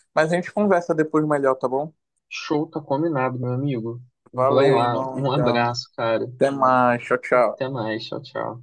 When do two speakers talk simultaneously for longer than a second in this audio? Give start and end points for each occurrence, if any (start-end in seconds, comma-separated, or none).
4.3-5.7